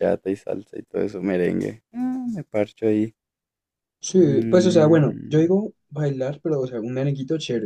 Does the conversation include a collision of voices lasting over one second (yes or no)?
yes